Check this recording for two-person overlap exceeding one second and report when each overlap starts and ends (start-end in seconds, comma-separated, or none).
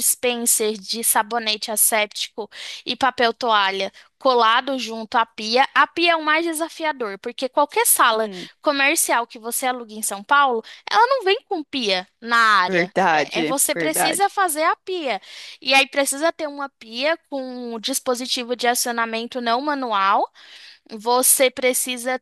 12.6-14.3